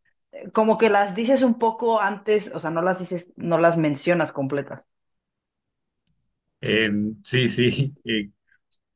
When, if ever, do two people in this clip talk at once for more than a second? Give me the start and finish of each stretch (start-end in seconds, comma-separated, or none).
none